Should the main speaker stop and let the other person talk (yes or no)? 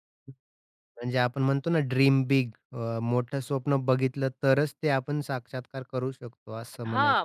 yes